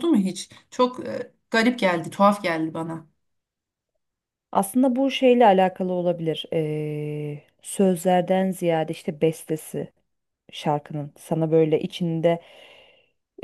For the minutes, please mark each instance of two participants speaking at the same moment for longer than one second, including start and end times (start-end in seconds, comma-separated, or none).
none